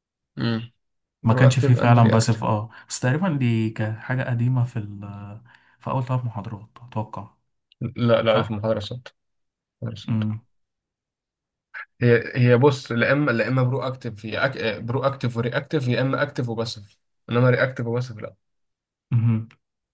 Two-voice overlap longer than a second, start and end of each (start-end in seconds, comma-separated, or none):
1.2-2.4